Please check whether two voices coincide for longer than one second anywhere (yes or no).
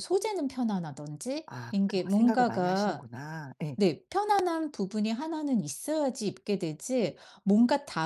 yes